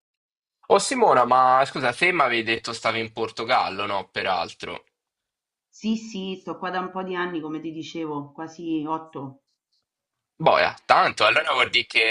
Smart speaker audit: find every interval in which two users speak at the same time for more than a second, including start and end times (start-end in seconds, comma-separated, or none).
none